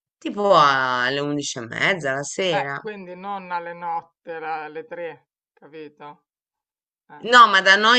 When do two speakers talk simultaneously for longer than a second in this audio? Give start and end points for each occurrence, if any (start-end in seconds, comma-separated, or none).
none